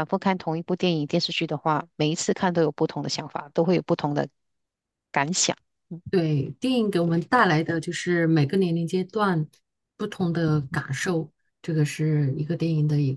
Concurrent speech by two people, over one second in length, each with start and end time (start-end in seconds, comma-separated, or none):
none